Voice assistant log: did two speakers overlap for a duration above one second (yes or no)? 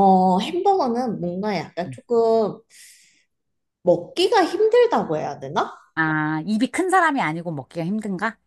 no